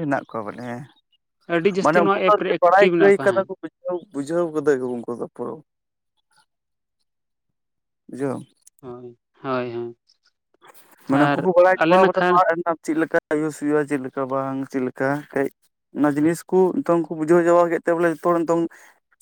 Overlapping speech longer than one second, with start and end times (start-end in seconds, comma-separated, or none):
1.8-3.5